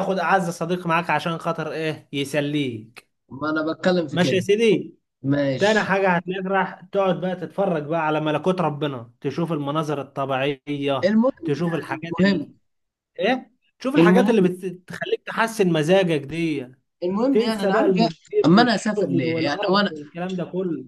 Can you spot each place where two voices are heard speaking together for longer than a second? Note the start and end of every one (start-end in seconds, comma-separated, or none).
11.0-12.5, 17.3-19.9